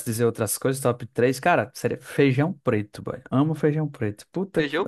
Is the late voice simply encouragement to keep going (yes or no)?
no